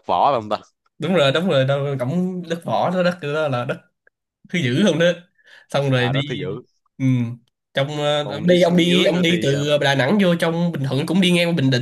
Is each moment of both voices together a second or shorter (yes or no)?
no